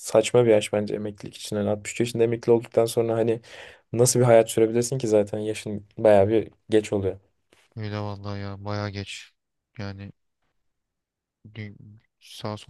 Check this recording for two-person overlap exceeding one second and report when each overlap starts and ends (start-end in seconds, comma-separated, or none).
none